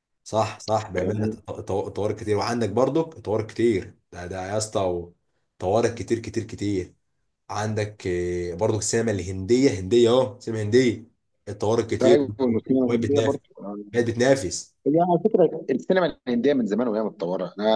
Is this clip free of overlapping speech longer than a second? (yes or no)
no